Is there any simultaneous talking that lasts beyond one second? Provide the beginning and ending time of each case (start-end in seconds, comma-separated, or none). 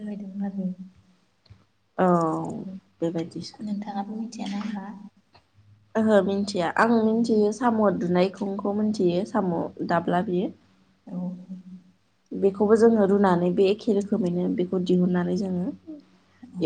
none